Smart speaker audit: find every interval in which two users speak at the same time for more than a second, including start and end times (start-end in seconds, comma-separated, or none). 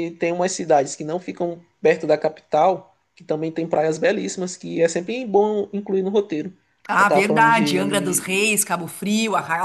7.0-8.6